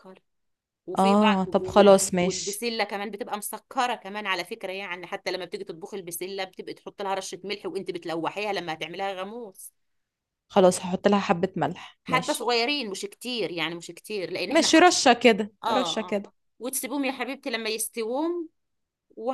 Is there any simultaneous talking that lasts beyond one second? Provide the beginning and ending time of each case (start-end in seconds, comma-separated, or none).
1.0-2.6